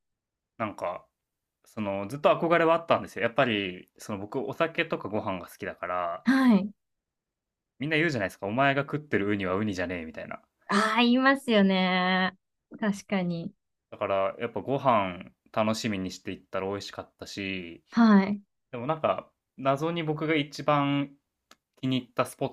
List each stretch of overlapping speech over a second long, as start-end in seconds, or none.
none